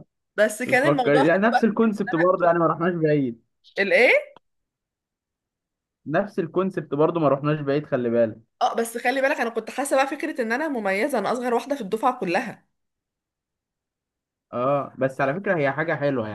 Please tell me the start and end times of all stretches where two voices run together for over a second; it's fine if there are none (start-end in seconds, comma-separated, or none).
0.7-1.9